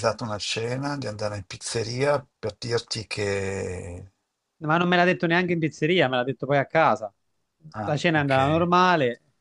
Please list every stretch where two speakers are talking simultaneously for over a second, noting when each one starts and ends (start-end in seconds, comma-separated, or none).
none